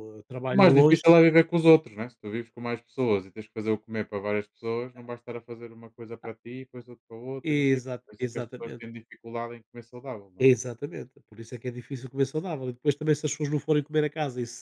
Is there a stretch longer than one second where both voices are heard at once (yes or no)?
yes